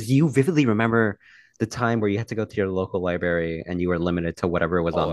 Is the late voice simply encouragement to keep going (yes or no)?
no